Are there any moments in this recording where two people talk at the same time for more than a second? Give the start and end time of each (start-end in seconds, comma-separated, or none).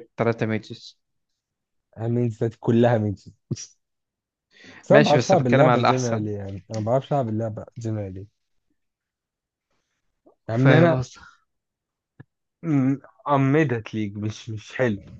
4.9-6.3